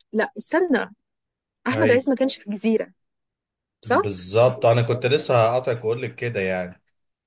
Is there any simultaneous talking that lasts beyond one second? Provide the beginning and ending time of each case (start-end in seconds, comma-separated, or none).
none